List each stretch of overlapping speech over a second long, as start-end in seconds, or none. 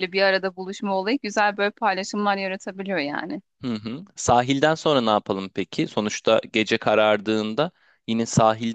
none